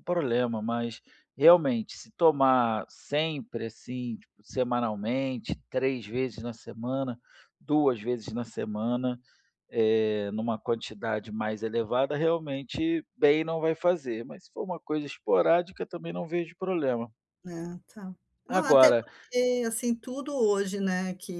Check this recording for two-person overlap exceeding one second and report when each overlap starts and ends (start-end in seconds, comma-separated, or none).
none